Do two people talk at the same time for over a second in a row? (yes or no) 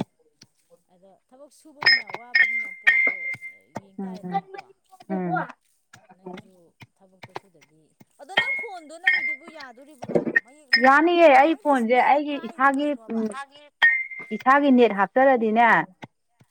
yes